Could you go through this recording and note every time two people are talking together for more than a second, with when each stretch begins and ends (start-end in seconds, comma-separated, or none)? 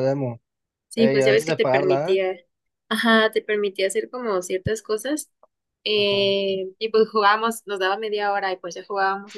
1.0-2.2